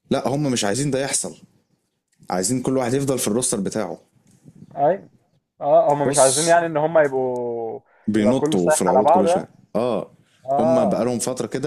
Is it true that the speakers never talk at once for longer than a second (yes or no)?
no